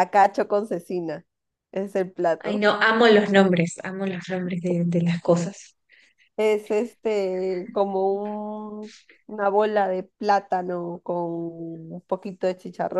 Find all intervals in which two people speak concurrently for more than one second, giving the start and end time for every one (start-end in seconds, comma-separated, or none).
none